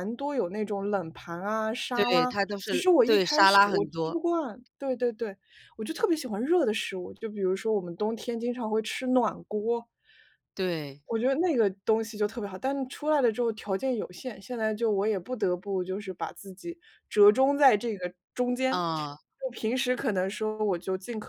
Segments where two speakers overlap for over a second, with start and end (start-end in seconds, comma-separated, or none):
1.9-4.2